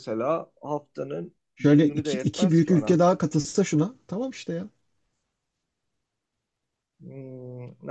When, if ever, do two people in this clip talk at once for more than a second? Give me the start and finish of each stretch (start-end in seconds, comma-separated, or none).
1.6-3.0